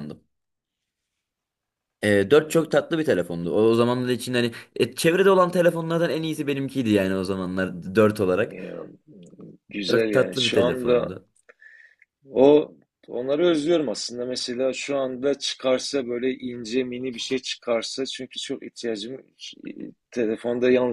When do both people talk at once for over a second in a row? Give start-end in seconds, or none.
9.9-11.1